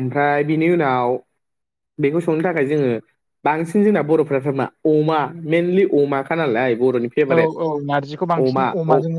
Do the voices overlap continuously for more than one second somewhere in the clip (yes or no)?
no